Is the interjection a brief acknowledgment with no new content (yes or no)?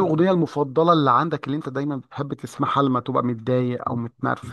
no